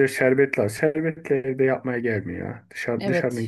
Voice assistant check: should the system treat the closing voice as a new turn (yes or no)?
yes